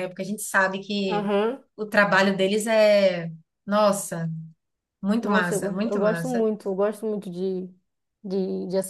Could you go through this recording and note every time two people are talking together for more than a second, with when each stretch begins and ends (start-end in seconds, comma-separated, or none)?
5.2-6.5